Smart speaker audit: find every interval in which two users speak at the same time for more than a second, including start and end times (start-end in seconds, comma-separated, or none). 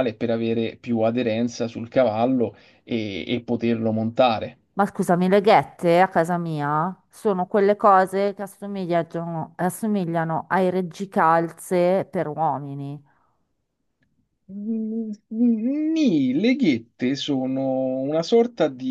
none